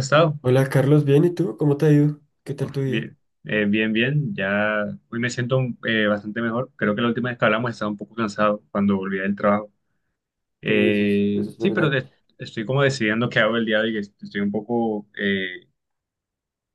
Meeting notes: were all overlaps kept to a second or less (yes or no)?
no